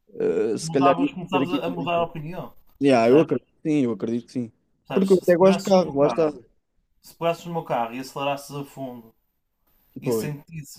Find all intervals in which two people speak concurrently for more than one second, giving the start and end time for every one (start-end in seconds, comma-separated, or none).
0.6-2.1, 4.9-6.3